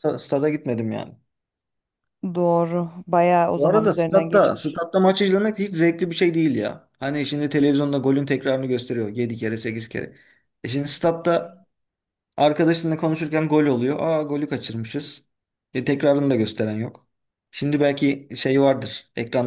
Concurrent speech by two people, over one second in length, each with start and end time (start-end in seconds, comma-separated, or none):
3.6-4.8